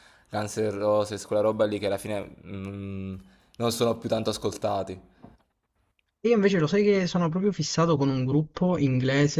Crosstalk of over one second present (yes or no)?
no